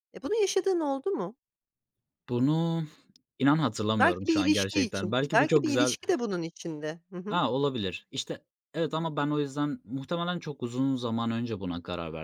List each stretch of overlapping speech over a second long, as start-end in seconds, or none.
4.0-5.9